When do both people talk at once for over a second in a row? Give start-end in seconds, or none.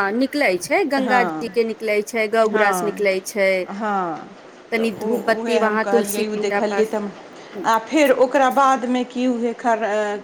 4.8-7.0